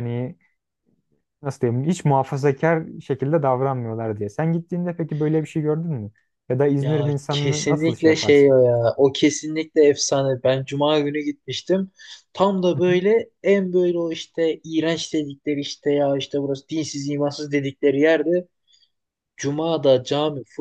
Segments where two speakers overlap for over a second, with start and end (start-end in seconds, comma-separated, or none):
6.8-8.5